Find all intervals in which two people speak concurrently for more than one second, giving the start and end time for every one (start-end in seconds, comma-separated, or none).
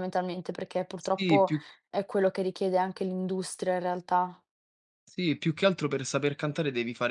none